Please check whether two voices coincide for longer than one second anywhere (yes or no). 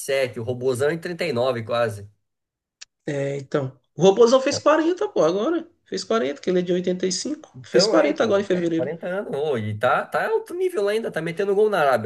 yes